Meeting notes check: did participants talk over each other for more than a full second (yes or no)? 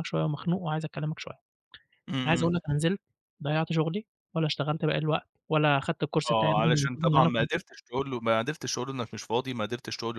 yes